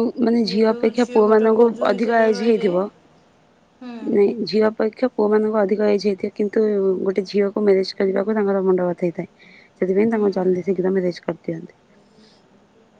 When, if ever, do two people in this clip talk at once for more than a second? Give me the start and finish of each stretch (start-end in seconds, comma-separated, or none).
0.5-2.7